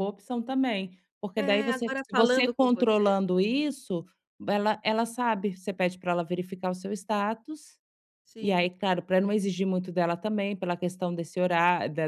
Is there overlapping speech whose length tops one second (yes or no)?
yes